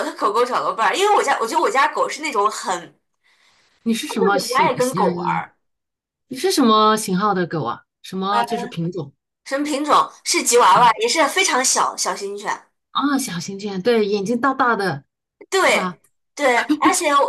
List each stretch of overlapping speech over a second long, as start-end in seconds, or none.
4.1-5.5